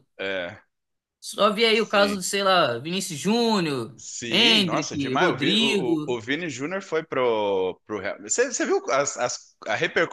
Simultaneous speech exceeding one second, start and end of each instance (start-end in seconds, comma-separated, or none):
4.0-6.2